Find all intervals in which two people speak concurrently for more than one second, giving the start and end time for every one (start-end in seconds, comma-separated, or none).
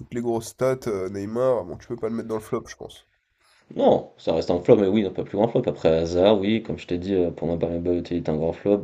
none